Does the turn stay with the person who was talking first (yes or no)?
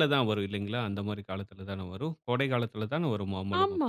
no